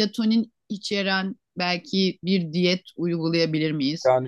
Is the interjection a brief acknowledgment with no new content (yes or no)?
yes